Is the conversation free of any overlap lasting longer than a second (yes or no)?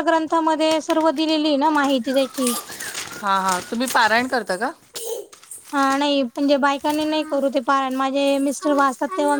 yes